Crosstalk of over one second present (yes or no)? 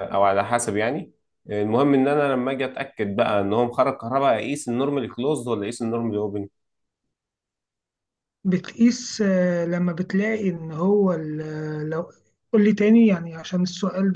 no